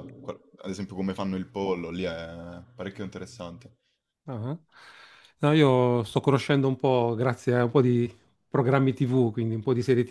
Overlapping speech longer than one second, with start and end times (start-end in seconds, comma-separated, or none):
none